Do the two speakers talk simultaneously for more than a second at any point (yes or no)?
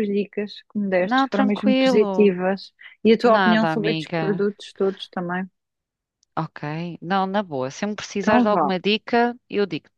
yes